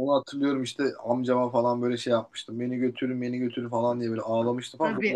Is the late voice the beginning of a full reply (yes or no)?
yes